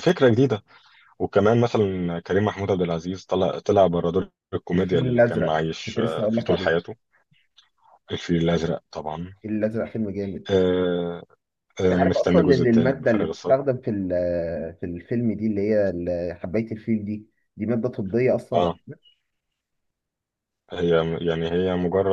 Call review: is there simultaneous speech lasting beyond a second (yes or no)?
yes